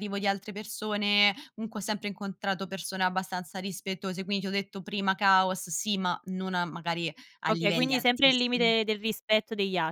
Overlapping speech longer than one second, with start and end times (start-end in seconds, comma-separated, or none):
7.5-8.7